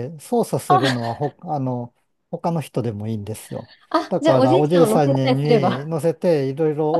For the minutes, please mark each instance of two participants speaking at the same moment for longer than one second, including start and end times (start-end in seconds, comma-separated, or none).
4.1-5.9